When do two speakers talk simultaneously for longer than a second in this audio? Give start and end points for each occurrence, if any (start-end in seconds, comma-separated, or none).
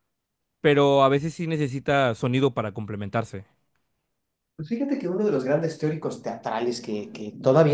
none